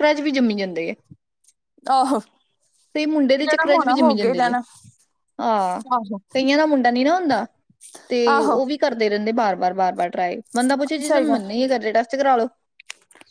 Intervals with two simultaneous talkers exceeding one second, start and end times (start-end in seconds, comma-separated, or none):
3.2-4.5